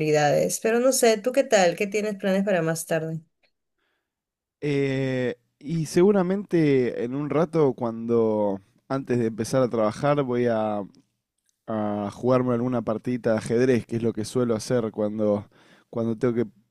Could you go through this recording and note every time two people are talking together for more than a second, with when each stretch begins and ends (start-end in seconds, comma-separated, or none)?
none